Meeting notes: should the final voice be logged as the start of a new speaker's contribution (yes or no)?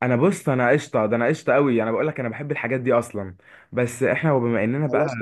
yes